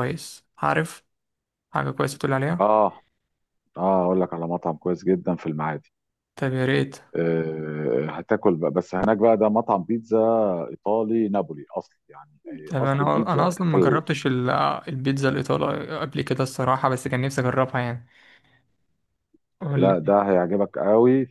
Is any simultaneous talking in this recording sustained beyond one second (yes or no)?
yes